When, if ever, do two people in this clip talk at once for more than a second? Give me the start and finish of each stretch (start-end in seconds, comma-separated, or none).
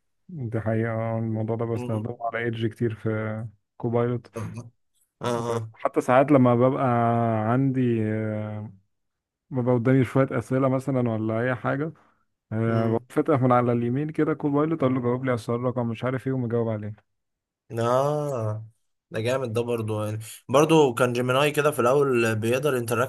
none